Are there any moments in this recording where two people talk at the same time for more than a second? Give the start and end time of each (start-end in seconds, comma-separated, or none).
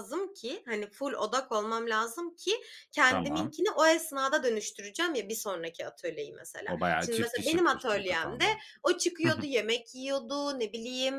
6.7-8.4